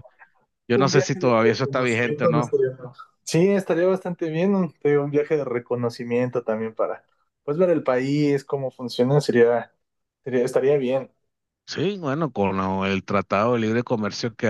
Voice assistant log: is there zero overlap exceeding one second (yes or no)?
no